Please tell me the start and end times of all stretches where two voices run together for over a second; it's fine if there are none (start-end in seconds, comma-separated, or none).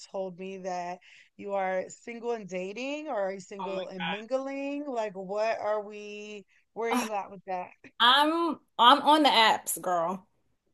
none